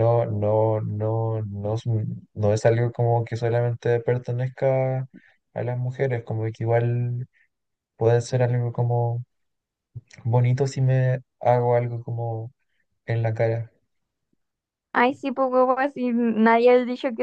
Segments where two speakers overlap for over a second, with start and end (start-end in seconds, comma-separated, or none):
none